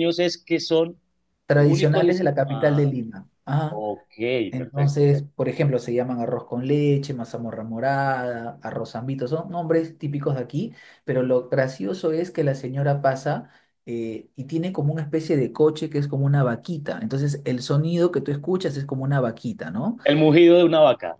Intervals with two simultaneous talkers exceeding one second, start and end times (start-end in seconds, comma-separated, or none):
1.5-2.9